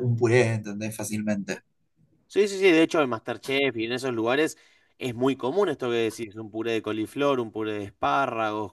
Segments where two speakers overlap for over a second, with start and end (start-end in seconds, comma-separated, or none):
none